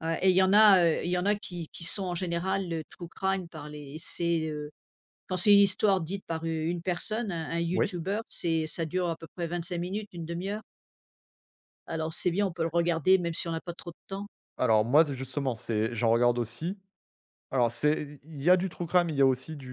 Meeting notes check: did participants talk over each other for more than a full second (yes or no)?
no